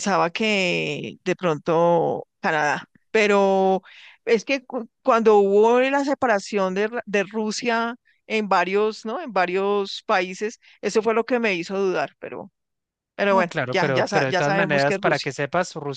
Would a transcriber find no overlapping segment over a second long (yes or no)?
no